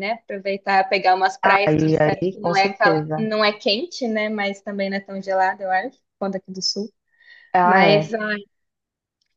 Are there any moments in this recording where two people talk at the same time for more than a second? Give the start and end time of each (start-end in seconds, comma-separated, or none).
1.7-3.2